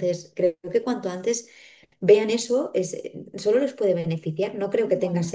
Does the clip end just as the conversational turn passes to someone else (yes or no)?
no